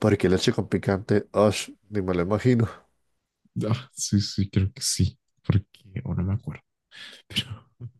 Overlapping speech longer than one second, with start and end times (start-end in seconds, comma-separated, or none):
none